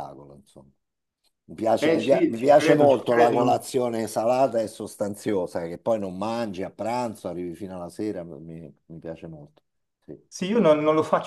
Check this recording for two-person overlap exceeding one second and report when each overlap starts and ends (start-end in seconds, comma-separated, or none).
1.8-3.6